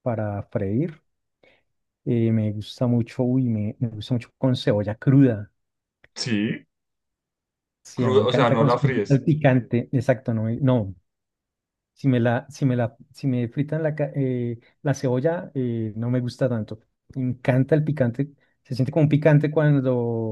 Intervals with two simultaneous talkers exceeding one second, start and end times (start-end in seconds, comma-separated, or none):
7.9-9.2